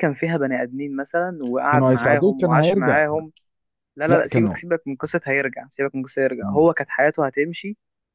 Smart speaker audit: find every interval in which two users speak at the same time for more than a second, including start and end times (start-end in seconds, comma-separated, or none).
1.7-3.0